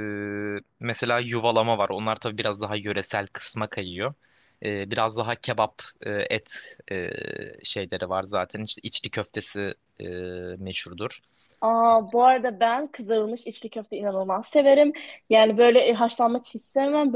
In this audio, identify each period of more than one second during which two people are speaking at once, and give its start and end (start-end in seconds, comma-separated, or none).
none